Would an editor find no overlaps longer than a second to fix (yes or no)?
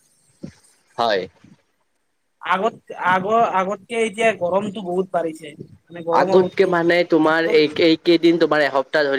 no